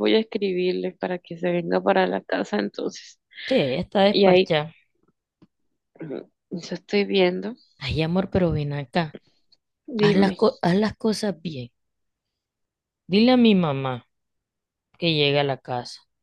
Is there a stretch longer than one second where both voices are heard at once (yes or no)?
no